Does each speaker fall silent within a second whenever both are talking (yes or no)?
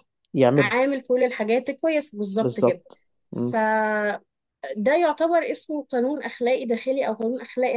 yes